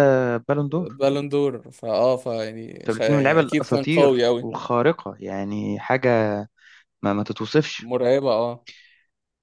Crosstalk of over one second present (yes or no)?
yes